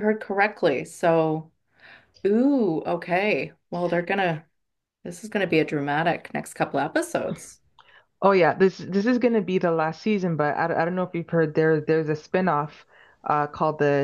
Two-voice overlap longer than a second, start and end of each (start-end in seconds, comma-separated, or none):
none